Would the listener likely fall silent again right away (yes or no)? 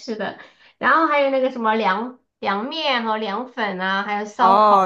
no